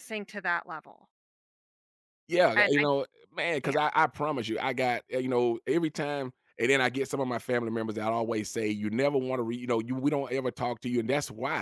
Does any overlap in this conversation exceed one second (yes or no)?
no